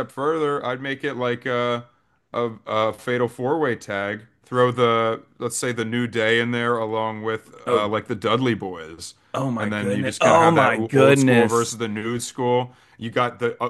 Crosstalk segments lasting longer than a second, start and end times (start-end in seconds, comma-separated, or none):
9.6-11.7